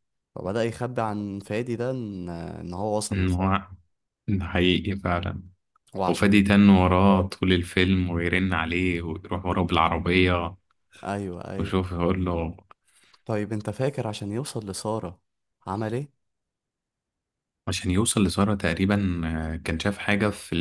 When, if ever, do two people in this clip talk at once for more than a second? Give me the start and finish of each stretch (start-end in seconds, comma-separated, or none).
none